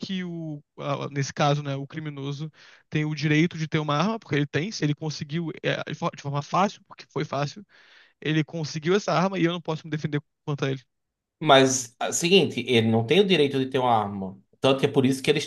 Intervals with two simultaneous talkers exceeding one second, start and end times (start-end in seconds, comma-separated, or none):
none